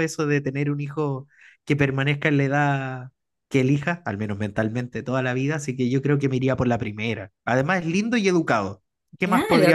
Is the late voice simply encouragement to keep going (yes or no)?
no